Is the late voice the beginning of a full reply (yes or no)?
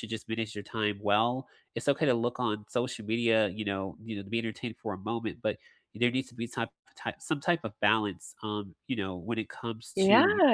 yes